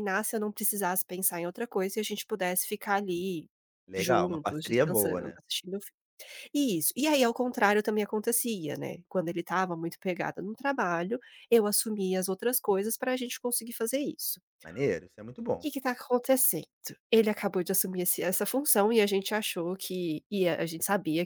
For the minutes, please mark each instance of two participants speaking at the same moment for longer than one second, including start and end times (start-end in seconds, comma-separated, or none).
4.0-5.4